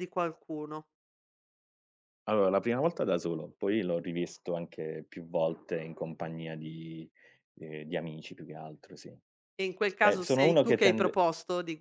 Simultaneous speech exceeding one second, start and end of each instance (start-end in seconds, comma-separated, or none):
10.0-11.2